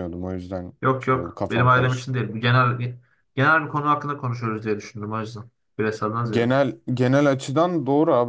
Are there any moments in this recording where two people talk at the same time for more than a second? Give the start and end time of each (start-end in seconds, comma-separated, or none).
0.8-2.2